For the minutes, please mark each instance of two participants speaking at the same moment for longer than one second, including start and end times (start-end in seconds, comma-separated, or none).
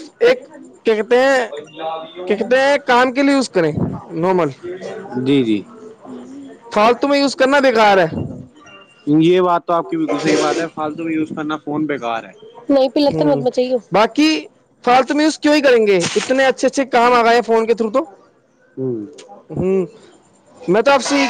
none